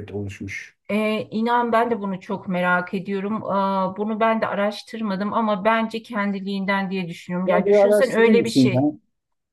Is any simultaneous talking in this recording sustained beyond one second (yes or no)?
yes